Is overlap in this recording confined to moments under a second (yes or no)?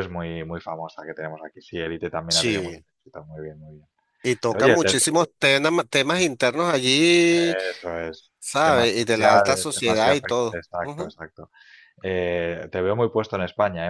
no